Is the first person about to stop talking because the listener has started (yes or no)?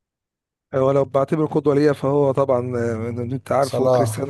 no